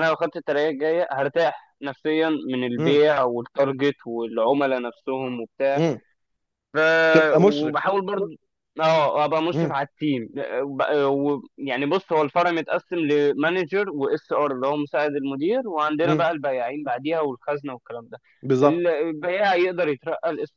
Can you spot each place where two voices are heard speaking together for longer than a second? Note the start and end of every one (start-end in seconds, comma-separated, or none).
none